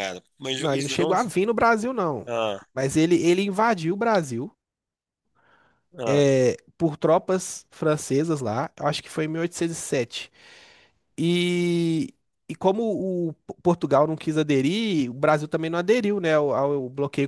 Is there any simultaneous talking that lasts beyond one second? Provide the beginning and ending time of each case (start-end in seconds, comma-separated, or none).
none